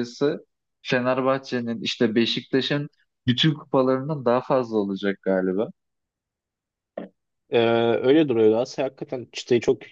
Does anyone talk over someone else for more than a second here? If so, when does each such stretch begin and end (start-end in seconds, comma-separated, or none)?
none